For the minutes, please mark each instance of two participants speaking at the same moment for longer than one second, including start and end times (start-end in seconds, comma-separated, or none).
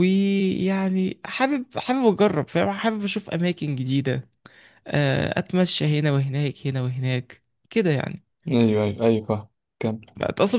none